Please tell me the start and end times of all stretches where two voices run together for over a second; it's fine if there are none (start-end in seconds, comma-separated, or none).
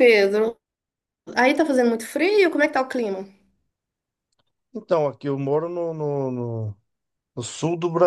none